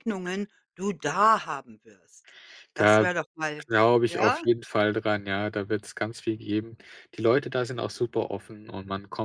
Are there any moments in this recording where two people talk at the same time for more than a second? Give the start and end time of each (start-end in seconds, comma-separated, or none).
none